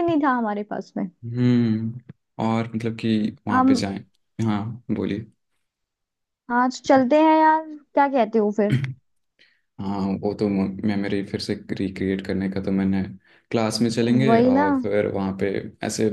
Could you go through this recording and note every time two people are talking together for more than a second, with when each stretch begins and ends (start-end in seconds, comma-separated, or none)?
none